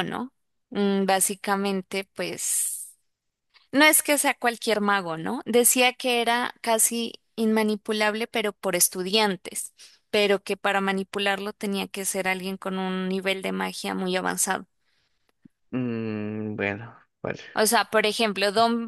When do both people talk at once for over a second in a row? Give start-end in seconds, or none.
none